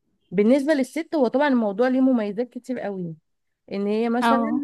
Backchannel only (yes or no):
yes